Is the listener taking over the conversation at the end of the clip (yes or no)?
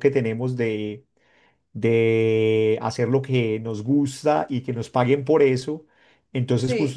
no